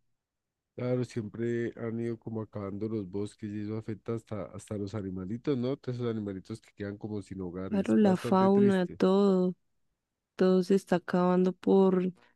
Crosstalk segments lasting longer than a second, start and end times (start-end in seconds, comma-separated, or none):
7.7-9.0